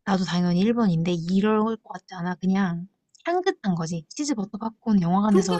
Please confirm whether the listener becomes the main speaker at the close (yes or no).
yes